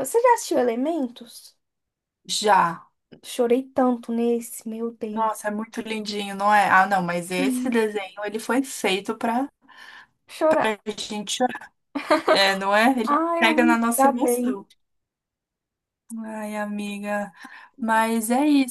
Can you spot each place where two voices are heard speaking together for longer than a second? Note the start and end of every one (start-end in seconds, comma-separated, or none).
13.1-14.6